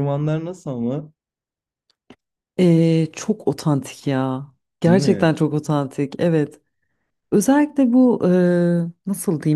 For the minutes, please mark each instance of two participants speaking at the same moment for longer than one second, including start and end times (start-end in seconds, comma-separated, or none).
none